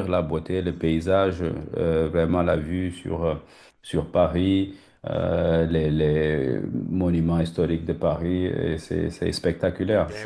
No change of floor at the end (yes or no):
no